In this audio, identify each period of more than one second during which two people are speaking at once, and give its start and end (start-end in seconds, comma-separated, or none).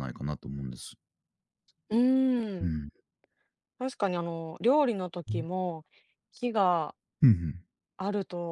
none